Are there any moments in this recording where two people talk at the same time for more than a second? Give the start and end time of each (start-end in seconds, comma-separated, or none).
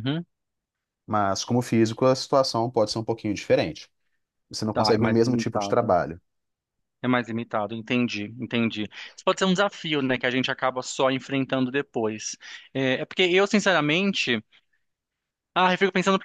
4.7-5.9